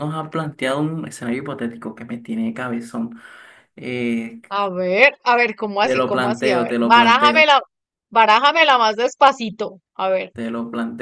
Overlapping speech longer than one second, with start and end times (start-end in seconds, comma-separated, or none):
5.8-7.5